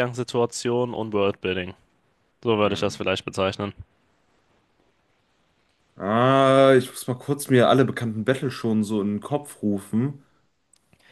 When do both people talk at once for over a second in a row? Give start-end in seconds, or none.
none